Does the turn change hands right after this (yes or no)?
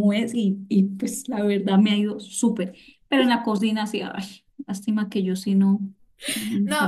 yes